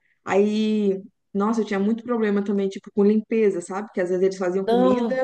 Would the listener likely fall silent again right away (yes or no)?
yes